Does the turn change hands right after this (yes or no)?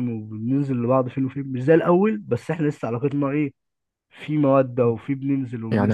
yes